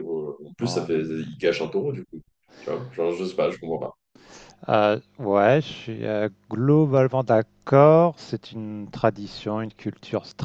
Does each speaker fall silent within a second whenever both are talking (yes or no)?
yes